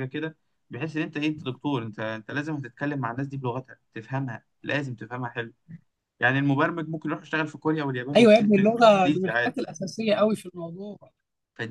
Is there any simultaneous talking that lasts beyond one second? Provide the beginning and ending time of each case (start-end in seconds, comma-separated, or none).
8.2-9.6